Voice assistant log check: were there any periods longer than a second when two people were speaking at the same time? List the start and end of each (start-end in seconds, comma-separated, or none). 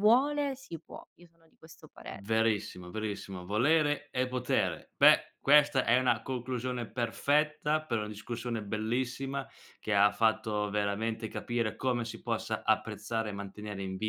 none